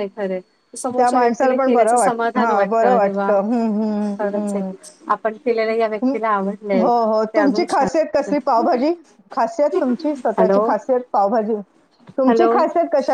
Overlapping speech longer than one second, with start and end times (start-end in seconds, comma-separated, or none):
1.0-3.2